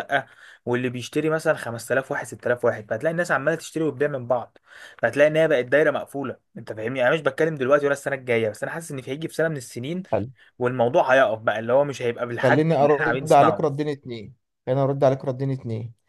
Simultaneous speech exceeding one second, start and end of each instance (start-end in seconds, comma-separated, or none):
12.4-13.8